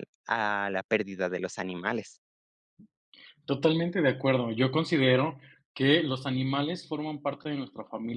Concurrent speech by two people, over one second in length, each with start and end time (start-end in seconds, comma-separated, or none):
none